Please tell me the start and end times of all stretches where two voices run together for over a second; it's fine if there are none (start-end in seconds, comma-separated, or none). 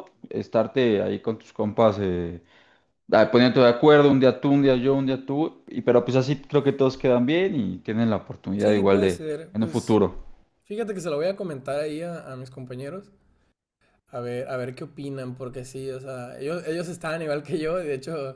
8.6-10.0